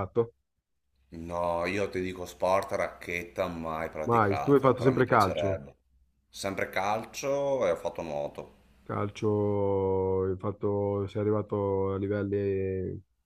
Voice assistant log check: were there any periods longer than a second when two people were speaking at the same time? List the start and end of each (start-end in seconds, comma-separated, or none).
4.1-5.6